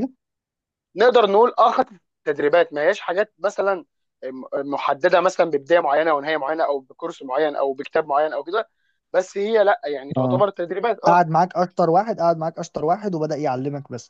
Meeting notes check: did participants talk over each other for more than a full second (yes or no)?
no